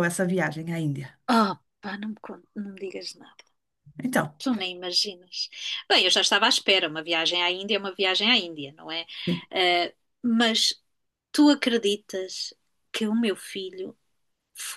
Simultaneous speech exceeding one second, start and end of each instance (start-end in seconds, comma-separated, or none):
none